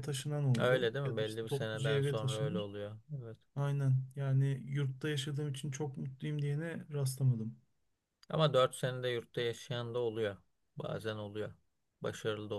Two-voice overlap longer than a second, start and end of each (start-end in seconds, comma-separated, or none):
0.6-2.7